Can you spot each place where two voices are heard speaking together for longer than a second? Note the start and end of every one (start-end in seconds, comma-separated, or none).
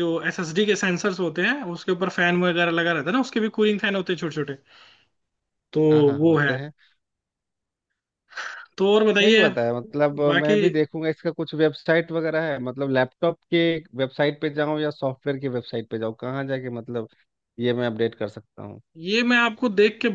none